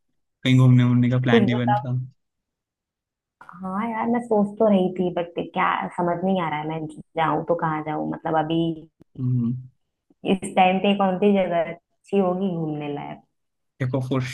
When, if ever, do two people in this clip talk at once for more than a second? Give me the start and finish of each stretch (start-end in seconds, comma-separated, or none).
none